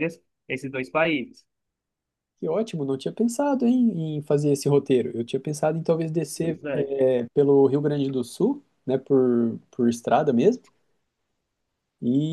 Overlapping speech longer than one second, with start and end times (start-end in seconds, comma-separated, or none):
none